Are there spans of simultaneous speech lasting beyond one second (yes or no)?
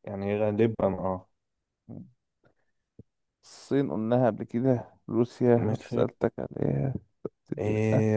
no